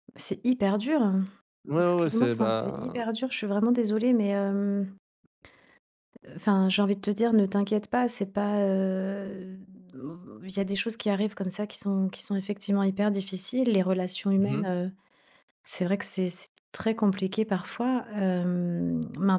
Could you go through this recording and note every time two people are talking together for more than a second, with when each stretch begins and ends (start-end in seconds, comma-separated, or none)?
1.8-3.0